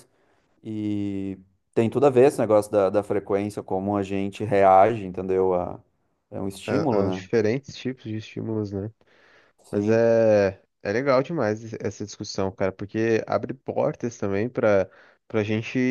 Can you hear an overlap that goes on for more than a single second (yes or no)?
no